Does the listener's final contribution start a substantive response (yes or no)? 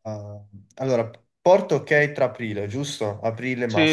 yes